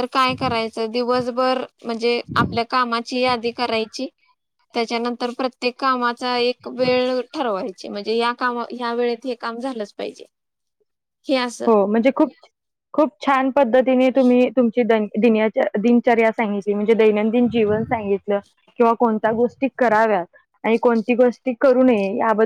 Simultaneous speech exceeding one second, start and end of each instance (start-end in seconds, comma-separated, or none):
none